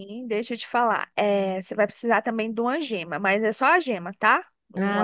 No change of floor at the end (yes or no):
yes